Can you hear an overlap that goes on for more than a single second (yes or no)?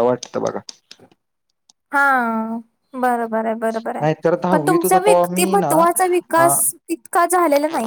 yes